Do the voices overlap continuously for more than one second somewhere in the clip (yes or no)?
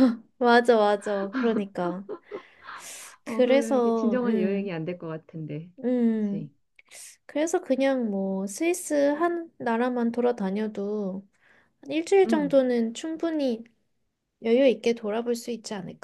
yes